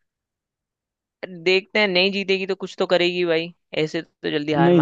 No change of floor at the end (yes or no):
no